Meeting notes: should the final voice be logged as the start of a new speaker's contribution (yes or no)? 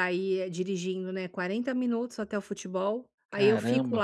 no